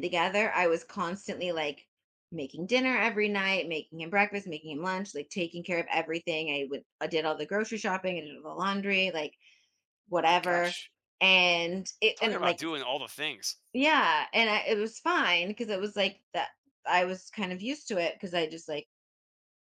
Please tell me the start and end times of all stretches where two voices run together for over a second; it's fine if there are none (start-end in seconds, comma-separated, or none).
none